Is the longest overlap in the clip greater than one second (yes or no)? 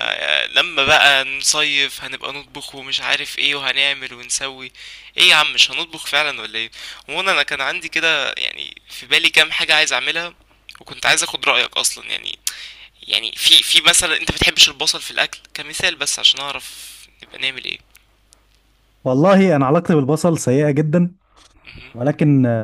no